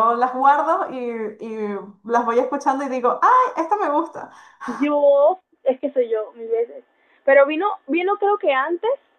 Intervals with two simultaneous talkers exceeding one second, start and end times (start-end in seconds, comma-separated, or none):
none